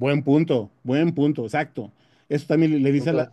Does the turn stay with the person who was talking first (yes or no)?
yes